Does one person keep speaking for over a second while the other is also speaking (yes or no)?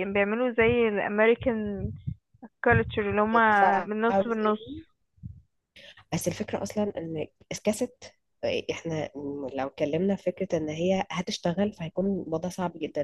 yes